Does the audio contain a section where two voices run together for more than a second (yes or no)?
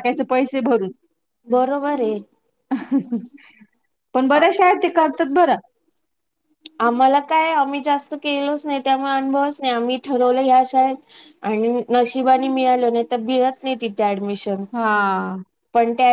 no